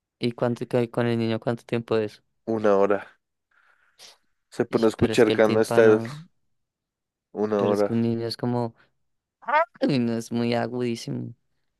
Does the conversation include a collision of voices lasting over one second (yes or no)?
yes